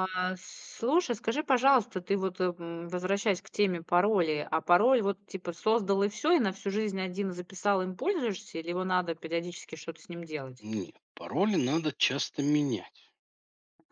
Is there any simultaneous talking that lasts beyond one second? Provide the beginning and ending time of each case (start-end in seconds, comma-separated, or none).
none